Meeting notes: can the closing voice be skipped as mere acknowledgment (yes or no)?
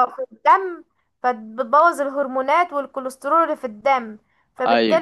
yes